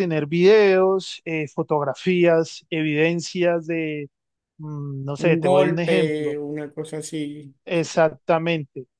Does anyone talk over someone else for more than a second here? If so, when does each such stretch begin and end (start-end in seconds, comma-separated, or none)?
5.2-6.4